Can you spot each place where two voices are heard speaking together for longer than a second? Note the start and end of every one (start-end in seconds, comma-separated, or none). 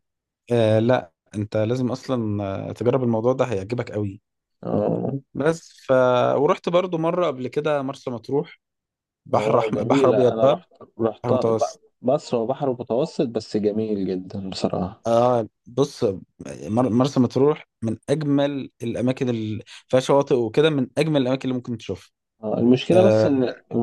9.3-10.6